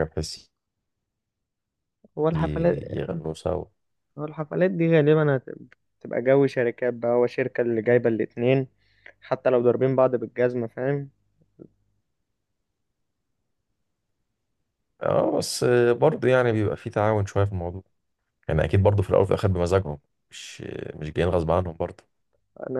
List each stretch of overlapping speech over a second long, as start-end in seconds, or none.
none